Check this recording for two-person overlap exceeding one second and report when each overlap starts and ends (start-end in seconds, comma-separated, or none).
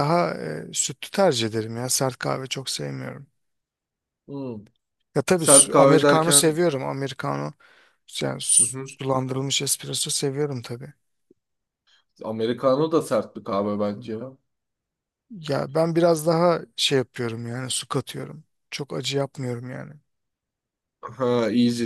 5.3-6.6